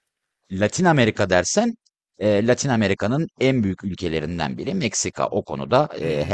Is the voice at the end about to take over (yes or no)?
yes